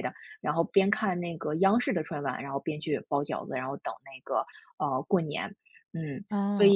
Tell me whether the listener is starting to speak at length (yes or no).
yes